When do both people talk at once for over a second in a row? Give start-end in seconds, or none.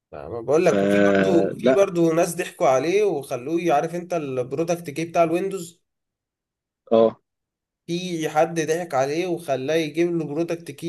0.6-1.9